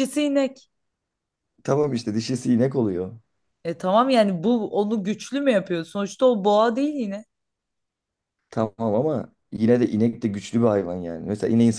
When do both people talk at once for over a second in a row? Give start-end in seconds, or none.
none